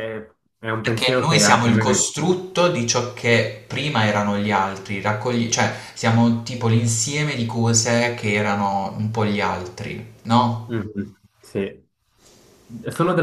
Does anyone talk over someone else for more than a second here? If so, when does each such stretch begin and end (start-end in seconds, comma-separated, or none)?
0.8-2.1